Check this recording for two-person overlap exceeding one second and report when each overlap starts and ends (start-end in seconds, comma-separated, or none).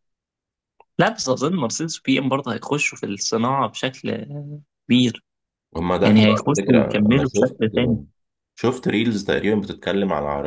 6.0-7.6